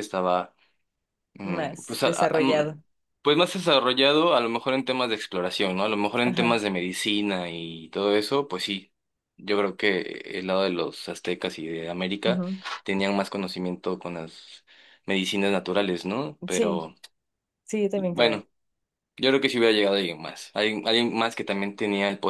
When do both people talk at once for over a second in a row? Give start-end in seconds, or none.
1.4-2.8